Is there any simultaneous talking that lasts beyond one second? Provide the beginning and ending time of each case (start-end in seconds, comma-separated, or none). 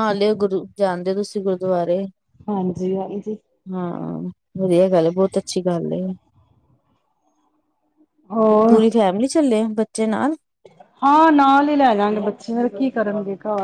none